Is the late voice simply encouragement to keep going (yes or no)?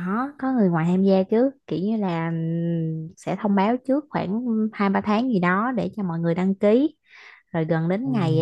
yes